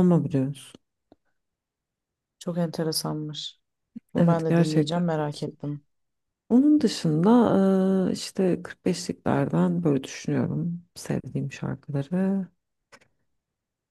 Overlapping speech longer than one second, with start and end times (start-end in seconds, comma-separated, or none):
4.2-5.6